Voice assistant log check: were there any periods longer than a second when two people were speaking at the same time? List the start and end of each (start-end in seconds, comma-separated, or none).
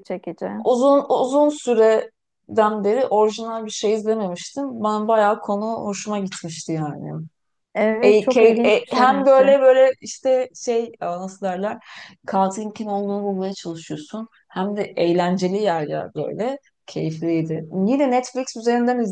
8.0-9.5